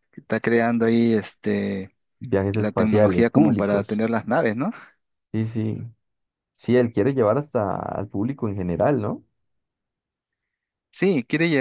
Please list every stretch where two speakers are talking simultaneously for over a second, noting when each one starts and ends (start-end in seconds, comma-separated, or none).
2.5-4.0